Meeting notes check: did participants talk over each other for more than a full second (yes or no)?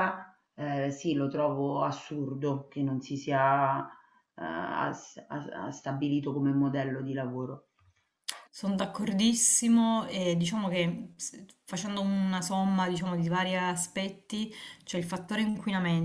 no